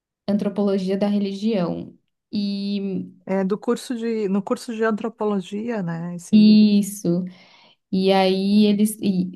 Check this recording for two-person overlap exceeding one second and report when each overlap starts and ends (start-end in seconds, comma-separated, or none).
none